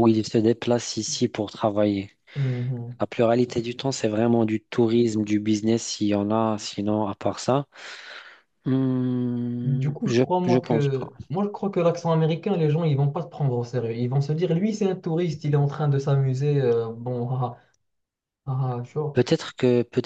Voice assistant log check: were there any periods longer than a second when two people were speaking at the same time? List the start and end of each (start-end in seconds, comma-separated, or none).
9.6-11.1